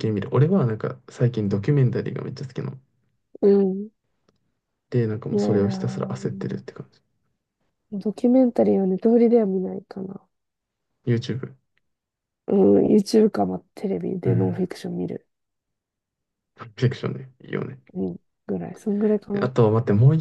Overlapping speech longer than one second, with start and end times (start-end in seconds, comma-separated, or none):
5.3-6.6